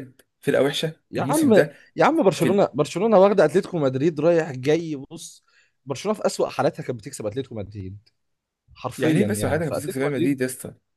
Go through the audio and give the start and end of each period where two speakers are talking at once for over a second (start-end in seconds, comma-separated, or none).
9.0-10.4